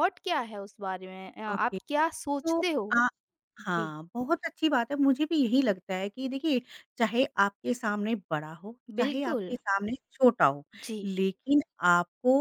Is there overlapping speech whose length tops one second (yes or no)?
no